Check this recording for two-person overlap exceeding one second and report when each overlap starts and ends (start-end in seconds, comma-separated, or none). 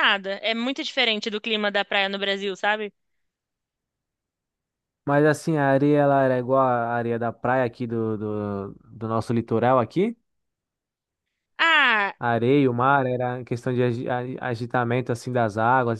none